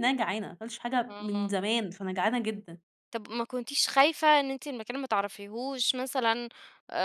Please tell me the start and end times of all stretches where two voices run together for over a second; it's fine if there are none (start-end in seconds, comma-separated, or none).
none